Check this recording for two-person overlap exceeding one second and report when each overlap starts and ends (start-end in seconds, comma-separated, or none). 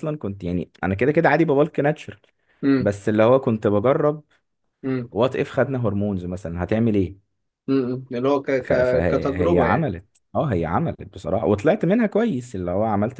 8.6-9.9